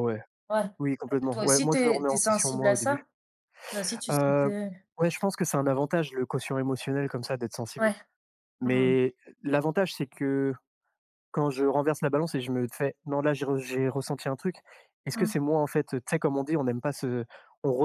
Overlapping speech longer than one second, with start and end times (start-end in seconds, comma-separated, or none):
1.1-3.0